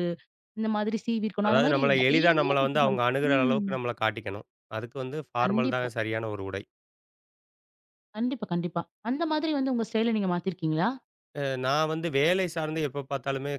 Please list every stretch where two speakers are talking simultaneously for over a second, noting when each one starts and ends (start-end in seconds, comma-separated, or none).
1.5-3.7